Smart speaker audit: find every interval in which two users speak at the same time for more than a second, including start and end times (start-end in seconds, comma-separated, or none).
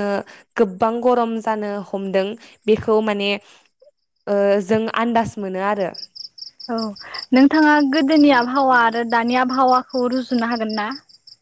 none